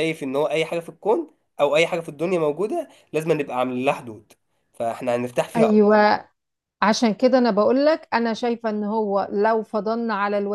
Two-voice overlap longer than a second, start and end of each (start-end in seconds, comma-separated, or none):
none